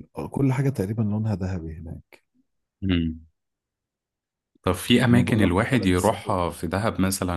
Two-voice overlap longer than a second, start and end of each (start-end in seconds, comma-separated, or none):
5.1-6.6